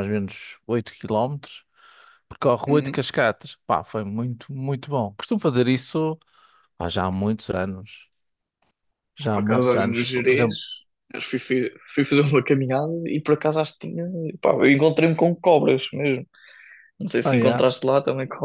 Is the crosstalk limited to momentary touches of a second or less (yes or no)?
no